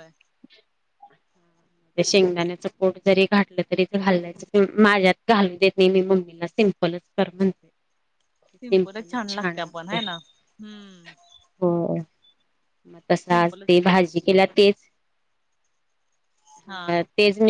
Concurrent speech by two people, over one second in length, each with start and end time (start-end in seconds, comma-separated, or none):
none